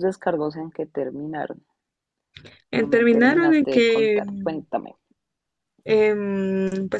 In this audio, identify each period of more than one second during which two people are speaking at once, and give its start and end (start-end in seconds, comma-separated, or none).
2.7-4.2